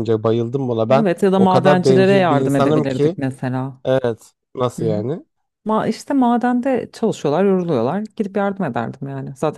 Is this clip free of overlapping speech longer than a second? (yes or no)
no